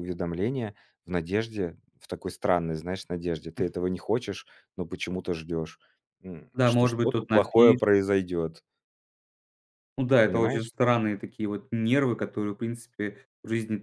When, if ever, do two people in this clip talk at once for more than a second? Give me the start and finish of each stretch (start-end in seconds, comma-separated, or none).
6.5-7.8